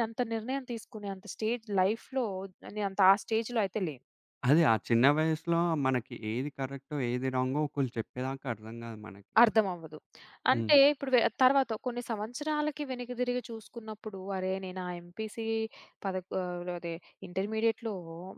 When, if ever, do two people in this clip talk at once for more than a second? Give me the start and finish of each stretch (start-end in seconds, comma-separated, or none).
none